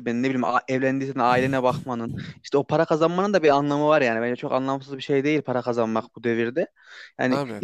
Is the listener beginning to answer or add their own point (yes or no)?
no